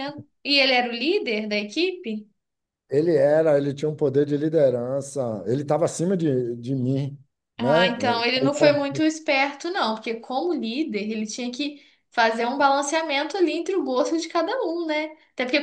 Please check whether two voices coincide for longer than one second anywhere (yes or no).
no